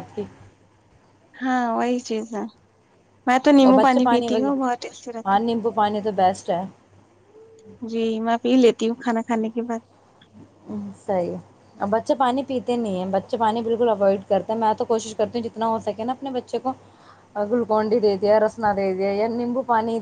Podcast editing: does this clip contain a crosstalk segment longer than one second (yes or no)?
yes